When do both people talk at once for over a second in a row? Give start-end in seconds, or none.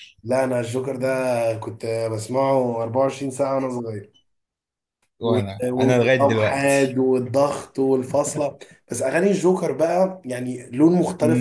5.2-7.0